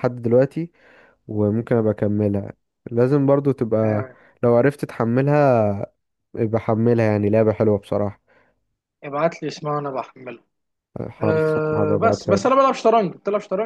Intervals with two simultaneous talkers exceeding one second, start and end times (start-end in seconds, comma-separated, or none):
11.2-12.5